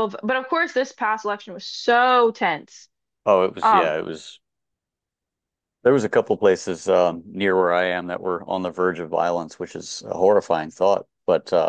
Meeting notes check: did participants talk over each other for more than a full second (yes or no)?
no